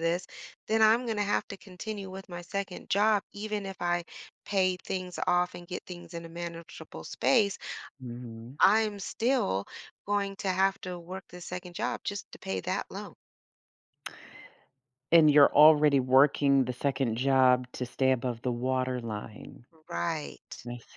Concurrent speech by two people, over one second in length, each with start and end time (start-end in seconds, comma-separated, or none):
none